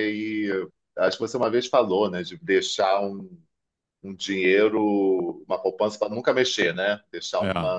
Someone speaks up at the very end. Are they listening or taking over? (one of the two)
listening